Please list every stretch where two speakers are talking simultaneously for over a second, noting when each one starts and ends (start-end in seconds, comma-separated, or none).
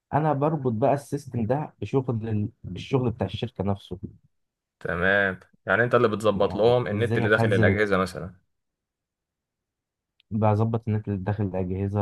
6.3-7.8